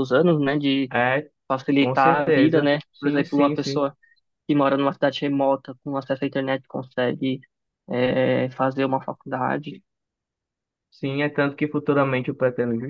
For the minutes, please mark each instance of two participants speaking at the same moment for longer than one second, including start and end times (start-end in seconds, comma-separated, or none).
1.8-3.9